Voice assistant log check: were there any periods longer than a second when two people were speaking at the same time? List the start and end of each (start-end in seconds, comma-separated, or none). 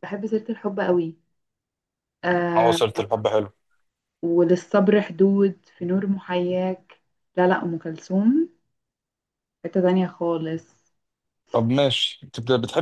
none